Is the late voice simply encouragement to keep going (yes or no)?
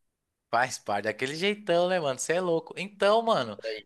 yes